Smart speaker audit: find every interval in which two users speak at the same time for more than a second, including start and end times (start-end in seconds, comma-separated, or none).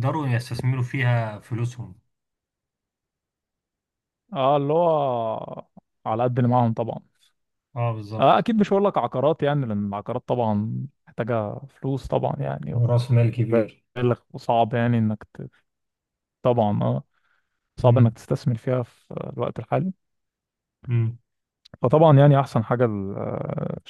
none